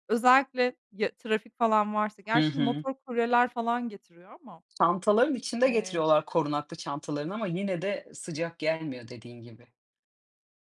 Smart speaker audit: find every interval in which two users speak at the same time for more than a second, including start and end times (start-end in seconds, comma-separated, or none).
none